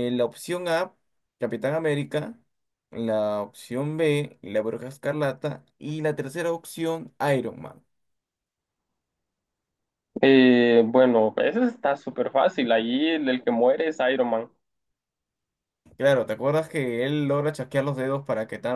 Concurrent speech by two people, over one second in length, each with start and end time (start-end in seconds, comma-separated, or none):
none